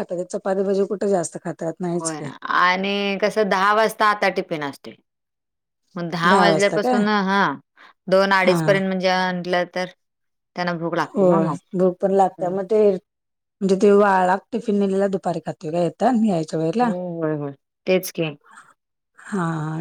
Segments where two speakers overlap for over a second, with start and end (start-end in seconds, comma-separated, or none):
none